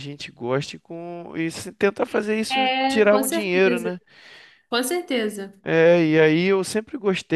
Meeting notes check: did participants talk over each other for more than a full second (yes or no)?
yes